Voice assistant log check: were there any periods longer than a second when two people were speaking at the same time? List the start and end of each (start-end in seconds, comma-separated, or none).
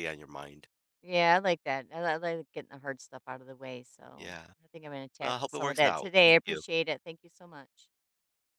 5.2-6.6